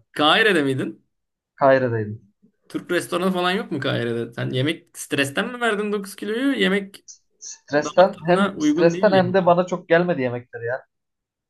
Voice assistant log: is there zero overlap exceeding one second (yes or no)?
no